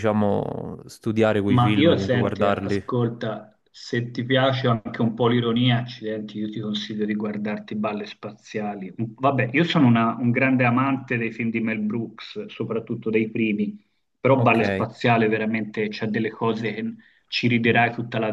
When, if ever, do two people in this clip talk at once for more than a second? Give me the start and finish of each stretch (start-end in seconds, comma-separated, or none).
1.5-2.8